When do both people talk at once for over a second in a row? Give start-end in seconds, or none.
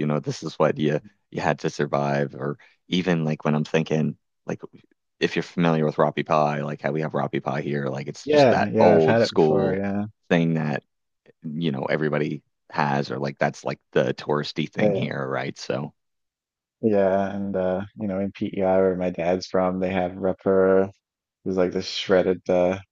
8.2-9.8